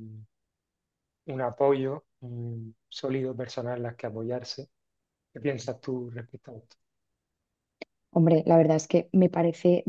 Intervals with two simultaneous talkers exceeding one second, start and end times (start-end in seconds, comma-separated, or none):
none